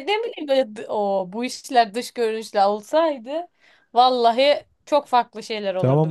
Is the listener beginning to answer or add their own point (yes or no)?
yes